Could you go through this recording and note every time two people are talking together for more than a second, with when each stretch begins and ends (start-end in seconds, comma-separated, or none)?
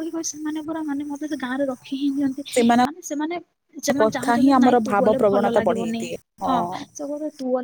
4.0-6.0